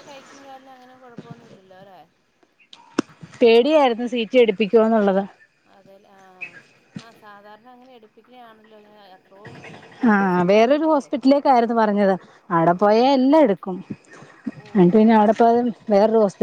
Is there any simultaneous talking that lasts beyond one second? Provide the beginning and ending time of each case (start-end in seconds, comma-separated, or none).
3.7-5.2